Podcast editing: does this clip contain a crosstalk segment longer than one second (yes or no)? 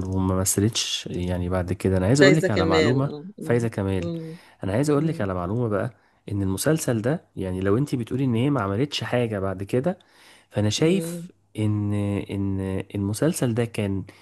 yes